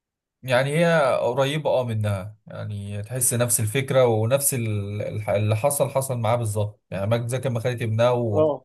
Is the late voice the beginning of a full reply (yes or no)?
no